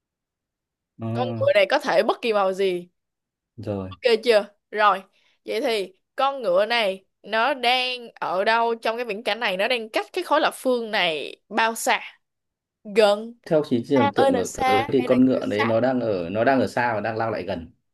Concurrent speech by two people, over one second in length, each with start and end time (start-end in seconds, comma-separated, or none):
13.9-15.7